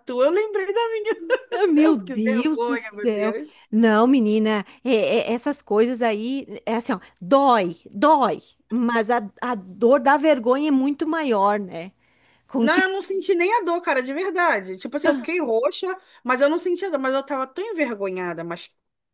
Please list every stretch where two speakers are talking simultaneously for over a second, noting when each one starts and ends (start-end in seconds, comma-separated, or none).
1.8-3.3